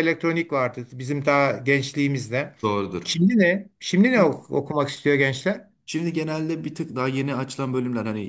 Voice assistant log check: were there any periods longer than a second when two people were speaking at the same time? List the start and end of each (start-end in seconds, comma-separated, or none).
none